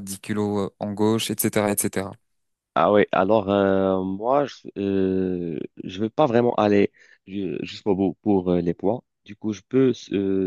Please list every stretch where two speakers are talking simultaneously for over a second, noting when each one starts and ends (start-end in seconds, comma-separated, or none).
none